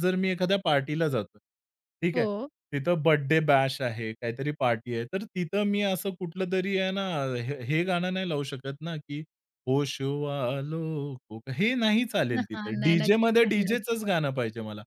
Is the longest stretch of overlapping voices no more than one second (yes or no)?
no